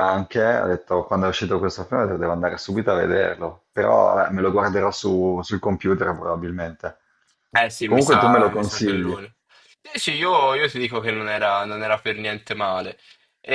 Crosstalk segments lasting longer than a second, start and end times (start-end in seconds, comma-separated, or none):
7.8-9.2